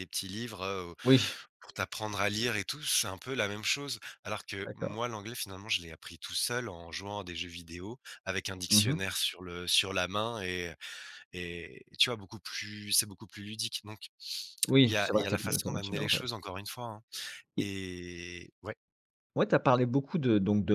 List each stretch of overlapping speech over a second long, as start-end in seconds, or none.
14.8-16.3